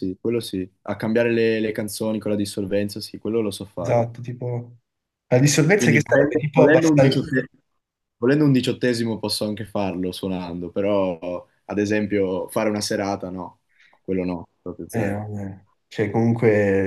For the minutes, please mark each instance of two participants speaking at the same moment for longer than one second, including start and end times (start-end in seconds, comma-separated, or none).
5.8-7.3